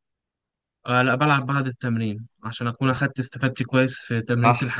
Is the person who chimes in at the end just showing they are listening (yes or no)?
no